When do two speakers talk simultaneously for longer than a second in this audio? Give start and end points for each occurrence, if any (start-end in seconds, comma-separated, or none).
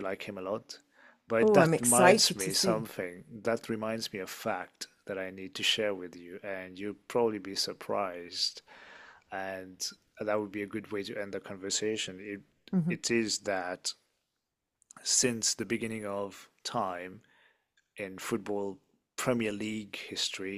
1.4-2.9